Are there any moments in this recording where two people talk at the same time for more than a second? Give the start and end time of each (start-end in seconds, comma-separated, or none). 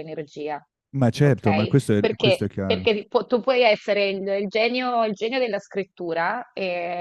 1.2-2.9